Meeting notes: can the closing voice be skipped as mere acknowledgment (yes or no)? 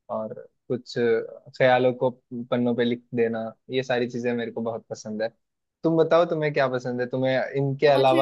yes